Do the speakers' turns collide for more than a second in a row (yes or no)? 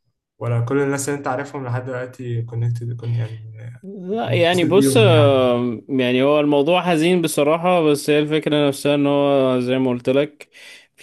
yes